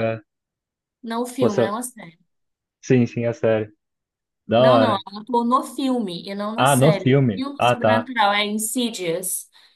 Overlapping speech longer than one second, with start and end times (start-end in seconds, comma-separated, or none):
6.5-8.1